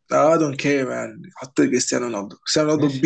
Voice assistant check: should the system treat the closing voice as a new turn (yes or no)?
no